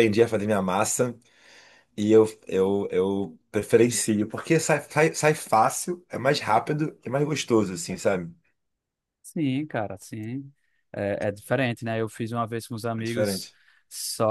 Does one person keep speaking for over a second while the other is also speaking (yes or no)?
no